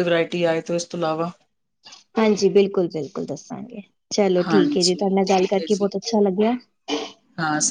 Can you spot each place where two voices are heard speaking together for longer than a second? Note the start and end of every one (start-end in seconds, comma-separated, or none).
4.5-5.9